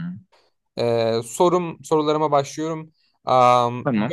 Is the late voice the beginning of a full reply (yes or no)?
no